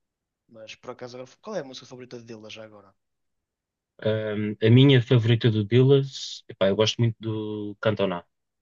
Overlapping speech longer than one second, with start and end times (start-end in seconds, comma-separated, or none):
none